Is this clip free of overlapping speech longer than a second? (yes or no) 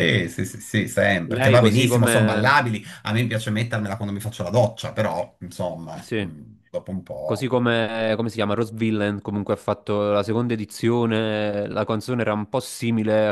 no